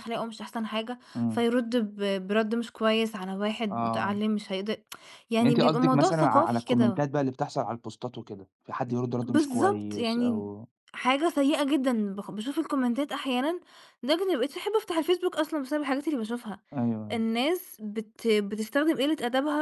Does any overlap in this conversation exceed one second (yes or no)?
yes